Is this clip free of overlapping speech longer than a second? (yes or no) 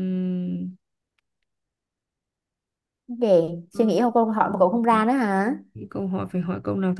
yes